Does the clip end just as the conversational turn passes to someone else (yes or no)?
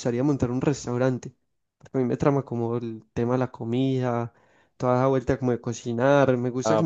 yes